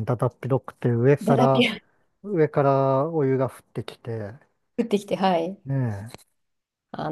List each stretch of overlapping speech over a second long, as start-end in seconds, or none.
none